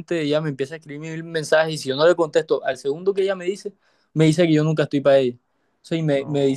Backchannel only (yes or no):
yes